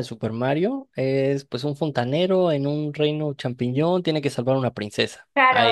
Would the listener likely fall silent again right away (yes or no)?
no